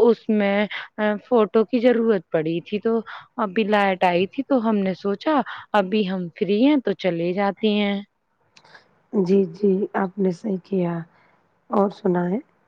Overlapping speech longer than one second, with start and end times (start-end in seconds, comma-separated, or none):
none